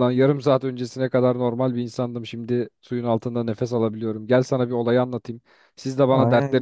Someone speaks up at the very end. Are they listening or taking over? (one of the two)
listening